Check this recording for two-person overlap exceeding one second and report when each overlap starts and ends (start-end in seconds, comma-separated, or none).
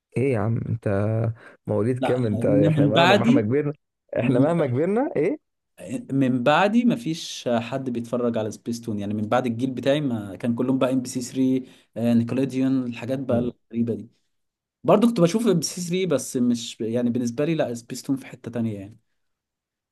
2.0-3.5